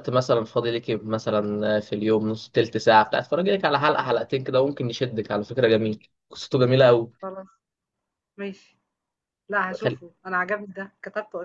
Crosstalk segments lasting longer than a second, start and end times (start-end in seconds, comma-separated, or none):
none